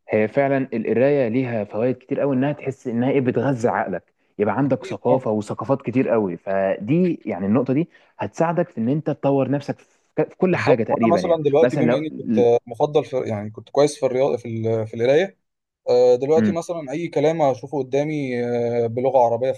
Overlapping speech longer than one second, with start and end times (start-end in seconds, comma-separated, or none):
10.5-12.1